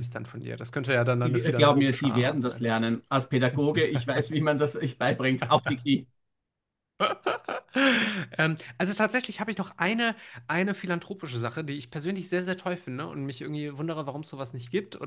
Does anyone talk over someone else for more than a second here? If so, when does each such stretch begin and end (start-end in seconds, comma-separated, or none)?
1.2-2.6